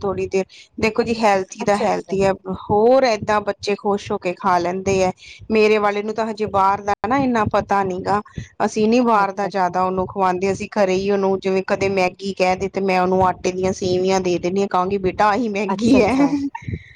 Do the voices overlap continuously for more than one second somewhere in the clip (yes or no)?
no